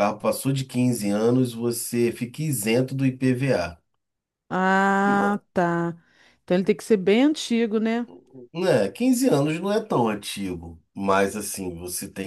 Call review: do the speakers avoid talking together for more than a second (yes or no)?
yes